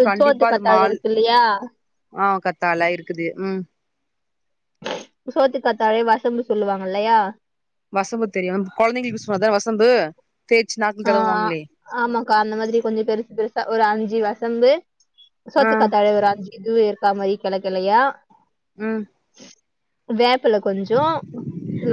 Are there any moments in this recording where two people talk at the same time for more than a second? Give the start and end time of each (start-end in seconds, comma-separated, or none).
none